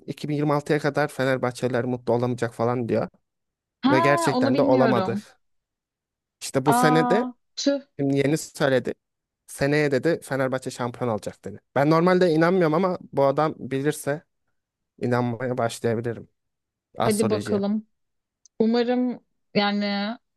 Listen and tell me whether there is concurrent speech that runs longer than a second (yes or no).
yes